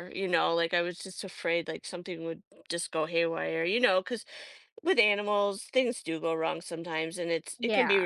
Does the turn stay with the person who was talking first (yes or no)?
yes